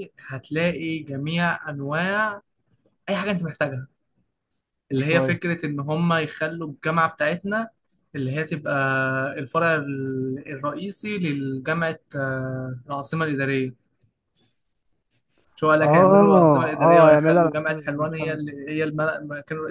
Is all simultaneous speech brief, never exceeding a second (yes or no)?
no